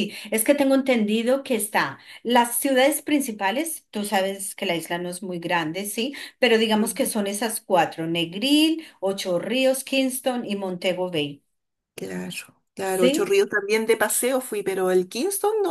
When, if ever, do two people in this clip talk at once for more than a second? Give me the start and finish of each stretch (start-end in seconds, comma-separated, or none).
none